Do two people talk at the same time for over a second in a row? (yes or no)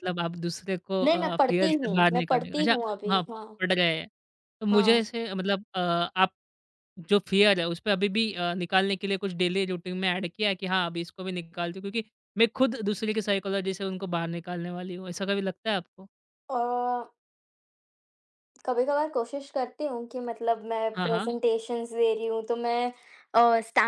yes